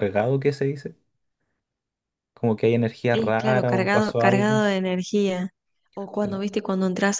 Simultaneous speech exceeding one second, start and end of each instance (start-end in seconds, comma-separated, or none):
3.1-4.6